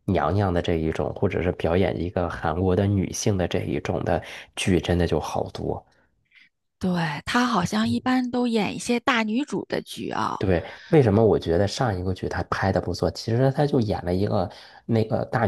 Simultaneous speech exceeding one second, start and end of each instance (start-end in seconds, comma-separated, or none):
none